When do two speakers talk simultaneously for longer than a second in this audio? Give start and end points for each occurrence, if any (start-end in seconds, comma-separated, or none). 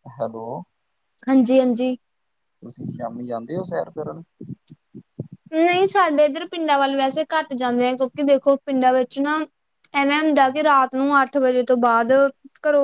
none